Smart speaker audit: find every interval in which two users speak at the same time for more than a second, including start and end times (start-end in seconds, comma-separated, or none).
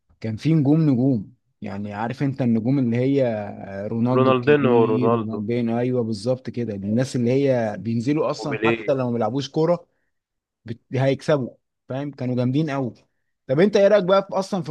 4.1-5.4